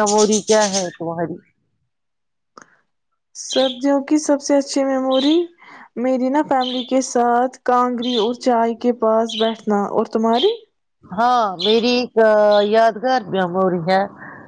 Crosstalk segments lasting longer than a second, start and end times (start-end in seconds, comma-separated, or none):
none